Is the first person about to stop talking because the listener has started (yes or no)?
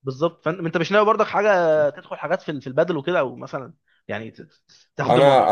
yes